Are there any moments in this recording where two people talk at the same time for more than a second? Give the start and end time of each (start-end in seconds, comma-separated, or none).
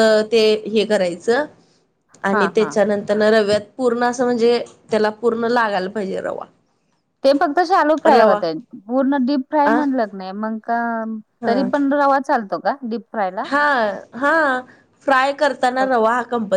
none